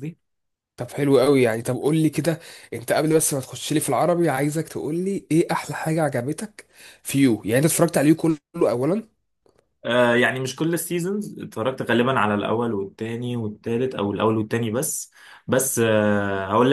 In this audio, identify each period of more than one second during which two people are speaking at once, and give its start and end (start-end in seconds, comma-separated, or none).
none